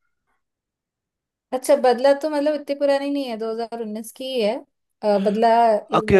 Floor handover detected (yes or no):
yes